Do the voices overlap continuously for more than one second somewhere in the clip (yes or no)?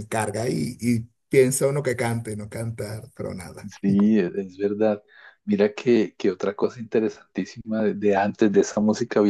no